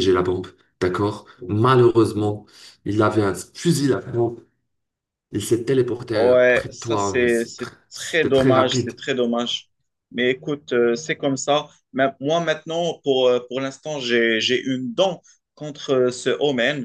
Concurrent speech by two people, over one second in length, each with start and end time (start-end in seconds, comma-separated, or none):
6.1-8.9